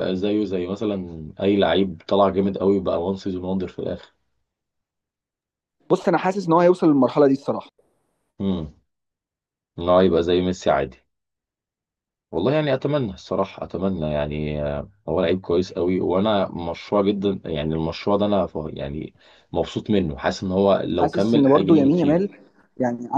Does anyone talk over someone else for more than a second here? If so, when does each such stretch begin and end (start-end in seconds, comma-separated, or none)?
21.0-22.3